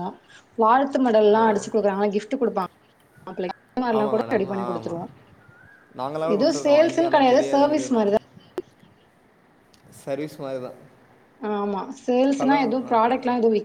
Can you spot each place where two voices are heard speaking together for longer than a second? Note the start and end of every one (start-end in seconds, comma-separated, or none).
6.3-8.0